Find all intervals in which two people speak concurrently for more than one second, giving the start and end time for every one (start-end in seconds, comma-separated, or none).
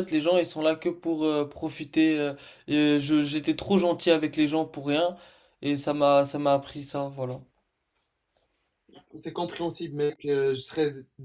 none